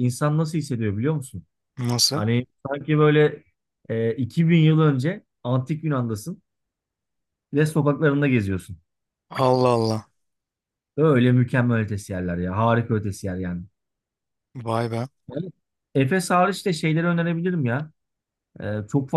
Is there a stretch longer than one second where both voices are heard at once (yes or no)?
no